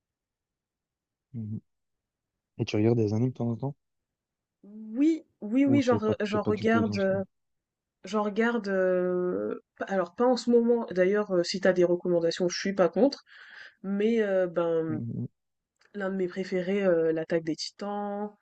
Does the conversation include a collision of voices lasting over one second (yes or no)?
yes